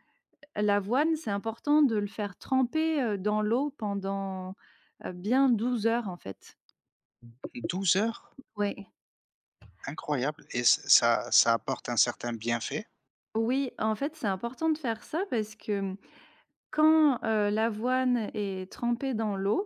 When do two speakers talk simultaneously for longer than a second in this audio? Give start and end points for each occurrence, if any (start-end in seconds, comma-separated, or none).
none